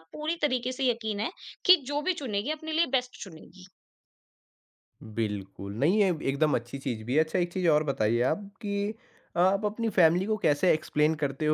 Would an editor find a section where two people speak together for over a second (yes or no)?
no